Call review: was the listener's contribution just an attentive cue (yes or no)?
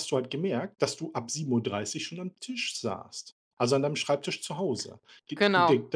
yes